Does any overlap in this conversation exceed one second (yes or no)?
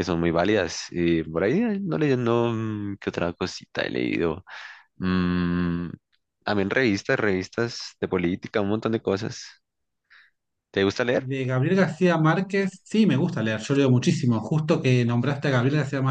no